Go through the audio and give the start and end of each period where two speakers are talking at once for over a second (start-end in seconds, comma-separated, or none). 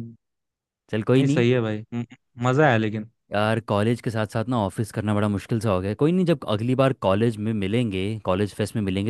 none